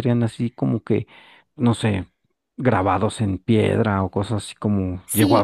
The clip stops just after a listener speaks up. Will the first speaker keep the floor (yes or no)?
no